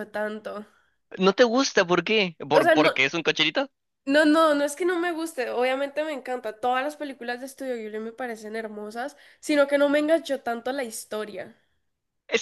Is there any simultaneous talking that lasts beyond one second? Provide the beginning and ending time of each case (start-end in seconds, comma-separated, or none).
none